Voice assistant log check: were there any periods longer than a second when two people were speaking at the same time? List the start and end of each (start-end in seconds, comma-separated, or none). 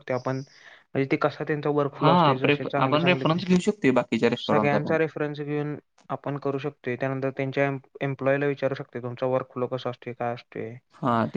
2.0-3.4